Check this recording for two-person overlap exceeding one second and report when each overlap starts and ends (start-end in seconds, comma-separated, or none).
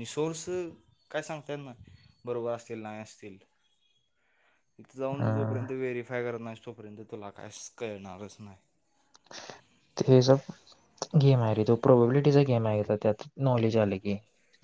none